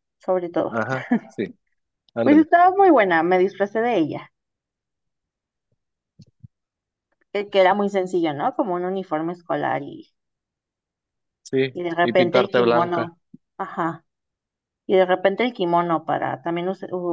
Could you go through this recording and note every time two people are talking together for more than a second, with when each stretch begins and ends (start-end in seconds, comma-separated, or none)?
11.7-13.1